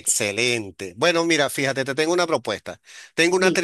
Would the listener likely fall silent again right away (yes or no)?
yes